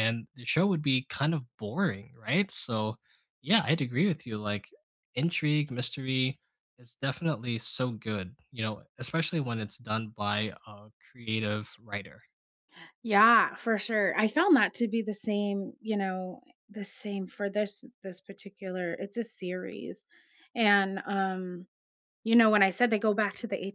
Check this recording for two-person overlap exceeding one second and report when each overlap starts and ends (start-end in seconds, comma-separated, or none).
none